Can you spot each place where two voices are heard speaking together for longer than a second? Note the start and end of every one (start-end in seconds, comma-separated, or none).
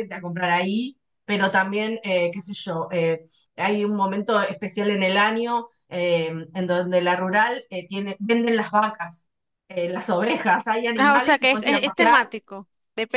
10.9-12.3